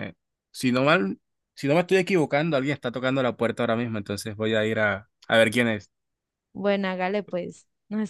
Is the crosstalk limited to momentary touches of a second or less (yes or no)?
yes